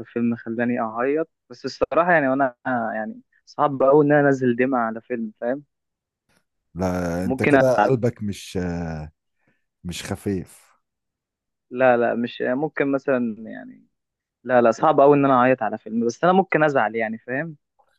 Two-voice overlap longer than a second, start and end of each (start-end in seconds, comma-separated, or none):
none